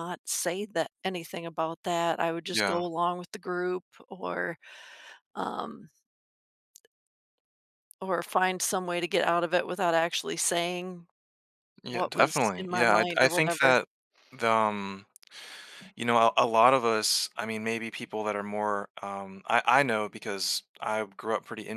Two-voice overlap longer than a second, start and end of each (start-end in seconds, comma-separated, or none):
11.9-13.8